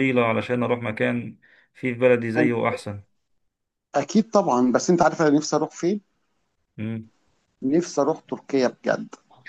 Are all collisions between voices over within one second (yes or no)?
yes